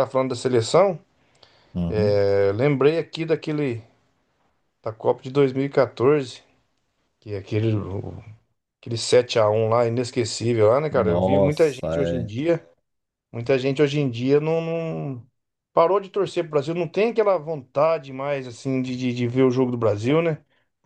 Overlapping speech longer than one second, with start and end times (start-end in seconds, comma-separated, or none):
10.9-12.2